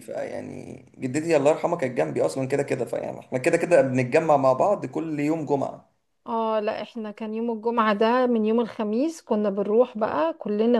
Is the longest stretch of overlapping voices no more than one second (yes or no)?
yes